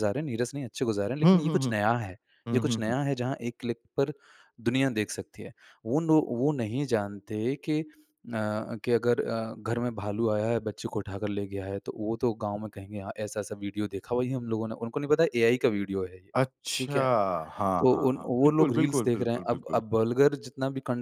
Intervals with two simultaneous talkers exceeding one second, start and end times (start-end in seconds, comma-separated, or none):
17.8-19.8